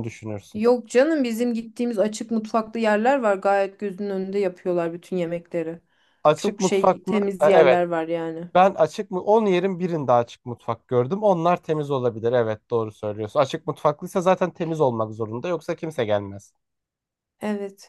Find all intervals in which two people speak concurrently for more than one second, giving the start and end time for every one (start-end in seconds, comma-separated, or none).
6.4-7.8